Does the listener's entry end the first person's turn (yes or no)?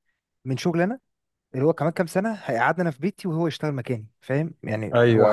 no